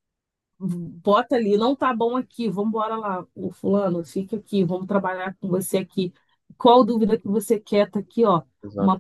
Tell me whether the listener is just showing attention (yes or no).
yes